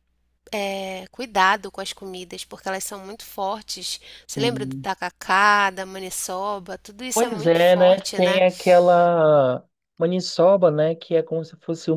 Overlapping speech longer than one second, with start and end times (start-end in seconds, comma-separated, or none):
7.1-8.4